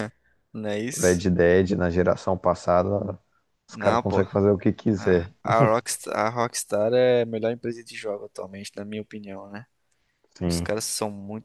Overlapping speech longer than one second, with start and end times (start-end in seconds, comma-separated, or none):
none